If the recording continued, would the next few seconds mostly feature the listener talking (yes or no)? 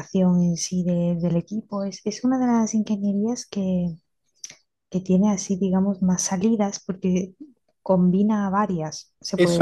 yes